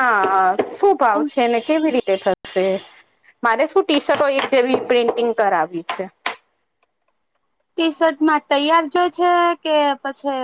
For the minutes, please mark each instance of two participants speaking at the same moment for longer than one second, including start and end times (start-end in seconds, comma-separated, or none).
none